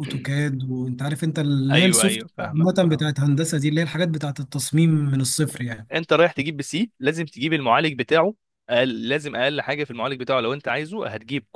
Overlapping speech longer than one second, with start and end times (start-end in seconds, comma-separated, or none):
1.7-3.1